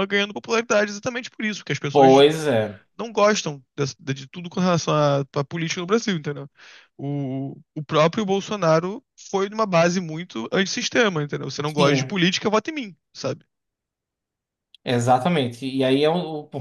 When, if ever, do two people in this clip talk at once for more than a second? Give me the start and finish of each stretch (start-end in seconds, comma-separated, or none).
none